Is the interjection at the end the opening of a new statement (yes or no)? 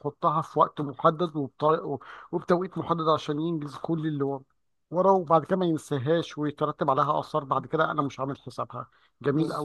yes